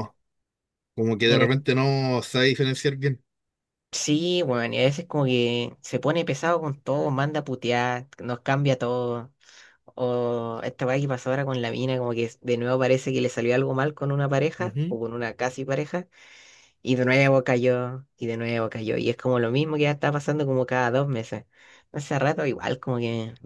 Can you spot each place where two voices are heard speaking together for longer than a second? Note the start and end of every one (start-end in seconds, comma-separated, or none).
none